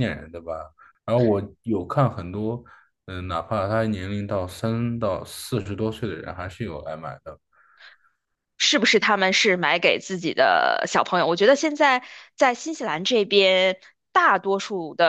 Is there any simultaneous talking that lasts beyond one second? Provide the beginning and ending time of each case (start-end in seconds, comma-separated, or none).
none